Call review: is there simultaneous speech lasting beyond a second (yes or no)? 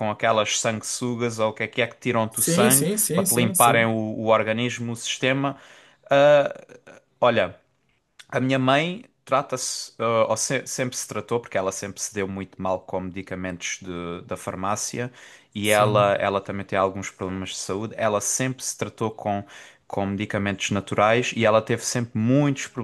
yes